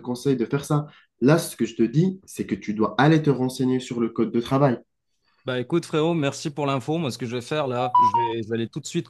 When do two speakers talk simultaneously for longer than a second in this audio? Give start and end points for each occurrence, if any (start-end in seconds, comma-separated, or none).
none